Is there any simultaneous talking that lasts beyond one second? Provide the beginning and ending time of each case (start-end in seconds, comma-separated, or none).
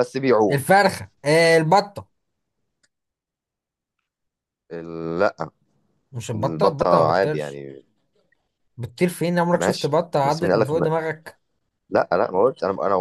6.3-7.6, 9.5-10.9